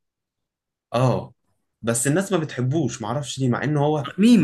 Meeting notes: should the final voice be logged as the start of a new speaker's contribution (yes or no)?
no